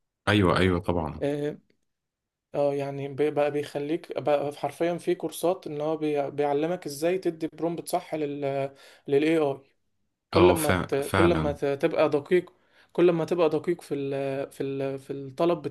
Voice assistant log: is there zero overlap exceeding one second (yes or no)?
no